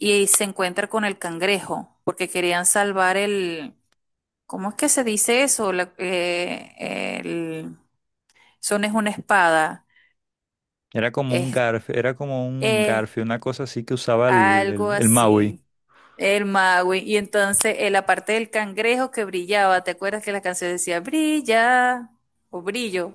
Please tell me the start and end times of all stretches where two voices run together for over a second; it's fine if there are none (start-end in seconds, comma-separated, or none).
14.3-15.6